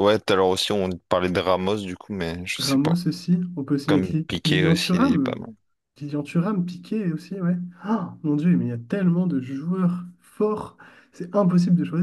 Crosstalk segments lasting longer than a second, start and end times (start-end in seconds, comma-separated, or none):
3.9-5.4